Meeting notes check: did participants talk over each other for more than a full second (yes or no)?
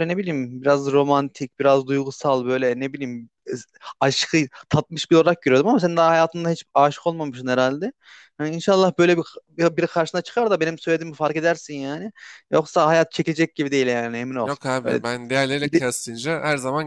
no